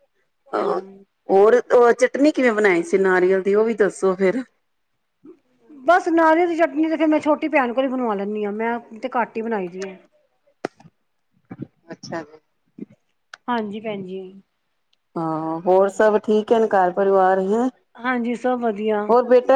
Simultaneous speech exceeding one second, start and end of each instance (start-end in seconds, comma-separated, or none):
none